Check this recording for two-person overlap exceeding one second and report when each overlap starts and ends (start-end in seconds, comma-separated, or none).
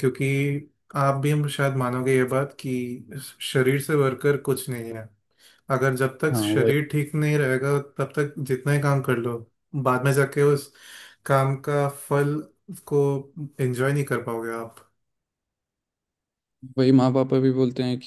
none